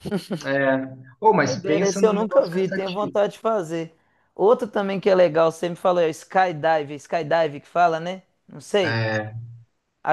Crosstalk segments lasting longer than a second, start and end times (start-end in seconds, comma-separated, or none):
1.4-3.2